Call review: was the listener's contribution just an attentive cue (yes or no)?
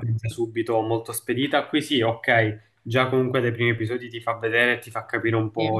yes